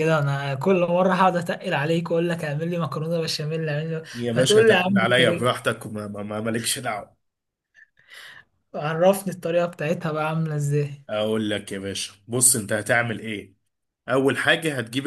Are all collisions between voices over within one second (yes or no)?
no